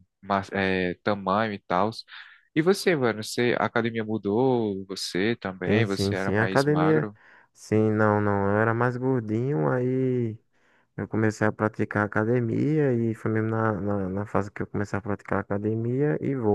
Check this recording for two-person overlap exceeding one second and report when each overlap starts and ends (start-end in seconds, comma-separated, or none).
5.7-7.1